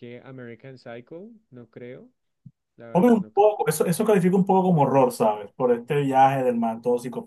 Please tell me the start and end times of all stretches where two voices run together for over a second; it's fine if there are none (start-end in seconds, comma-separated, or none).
none